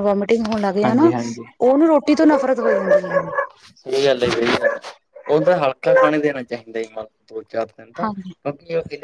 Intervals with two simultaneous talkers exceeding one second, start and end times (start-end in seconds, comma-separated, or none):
none